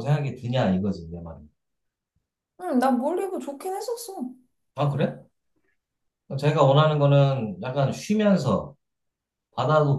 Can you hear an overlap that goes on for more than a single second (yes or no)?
no